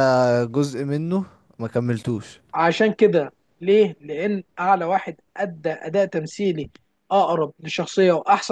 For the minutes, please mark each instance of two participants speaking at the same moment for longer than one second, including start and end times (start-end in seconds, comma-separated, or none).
none